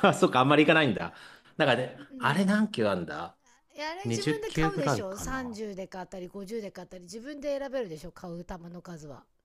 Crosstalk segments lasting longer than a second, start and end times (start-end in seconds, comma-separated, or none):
4.0-5.6